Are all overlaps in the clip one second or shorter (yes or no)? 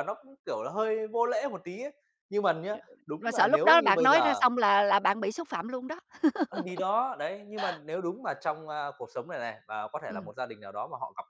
no